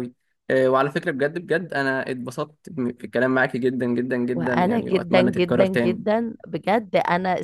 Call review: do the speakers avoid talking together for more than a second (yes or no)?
no